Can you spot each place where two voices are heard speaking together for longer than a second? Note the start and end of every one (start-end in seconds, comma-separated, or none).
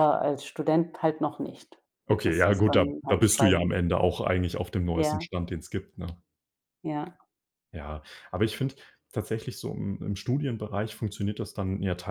2.2-3.8